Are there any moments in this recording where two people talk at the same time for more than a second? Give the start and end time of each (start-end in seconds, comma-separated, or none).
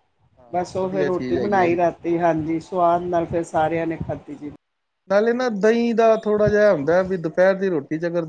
0.5-1.8